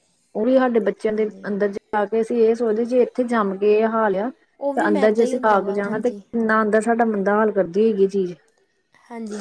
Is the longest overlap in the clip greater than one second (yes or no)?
yes